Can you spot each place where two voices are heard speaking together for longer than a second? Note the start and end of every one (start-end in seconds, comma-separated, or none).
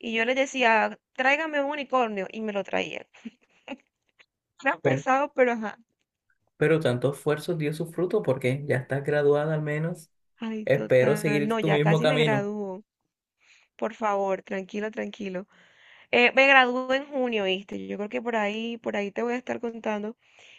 10.6-12.5